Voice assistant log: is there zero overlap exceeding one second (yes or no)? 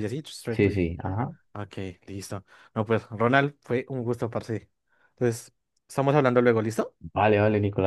yes